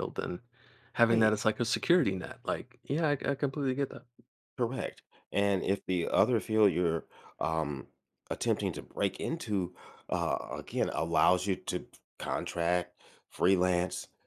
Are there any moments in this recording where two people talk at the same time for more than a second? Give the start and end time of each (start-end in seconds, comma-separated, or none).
none